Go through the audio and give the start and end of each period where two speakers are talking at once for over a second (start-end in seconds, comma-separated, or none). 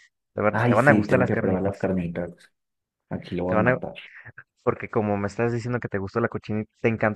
0.5-1.9